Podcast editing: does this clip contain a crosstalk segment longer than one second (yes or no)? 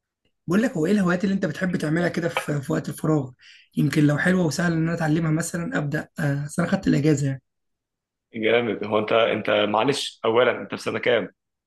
no